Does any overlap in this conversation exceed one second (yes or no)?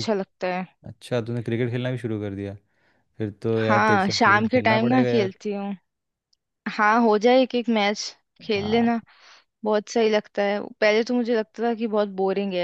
yes